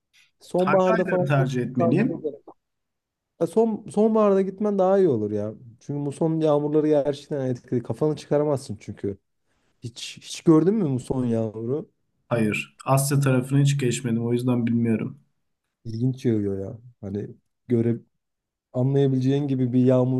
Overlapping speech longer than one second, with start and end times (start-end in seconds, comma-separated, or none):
0.6-2.3